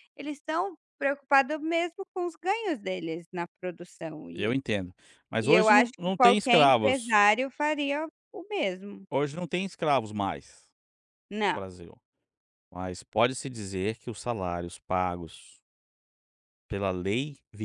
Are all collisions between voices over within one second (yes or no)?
no